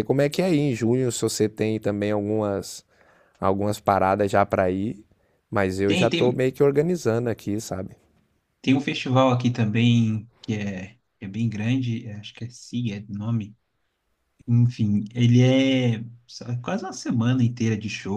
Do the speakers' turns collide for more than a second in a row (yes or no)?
no